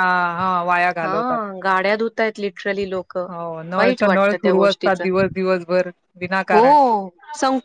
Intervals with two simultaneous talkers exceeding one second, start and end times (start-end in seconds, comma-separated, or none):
3.8-5.0